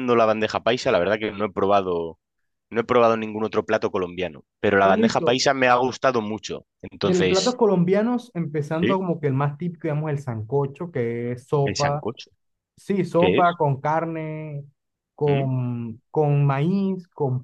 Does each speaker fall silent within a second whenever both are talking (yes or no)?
yes